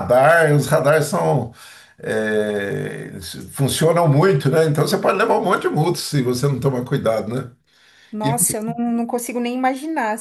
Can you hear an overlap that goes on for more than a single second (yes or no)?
no